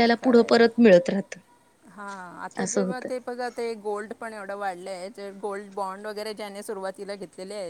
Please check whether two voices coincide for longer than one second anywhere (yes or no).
no